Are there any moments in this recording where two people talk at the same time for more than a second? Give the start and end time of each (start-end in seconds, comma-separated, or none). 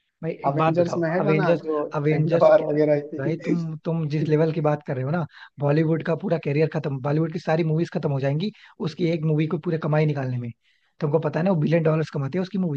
0.5-2.5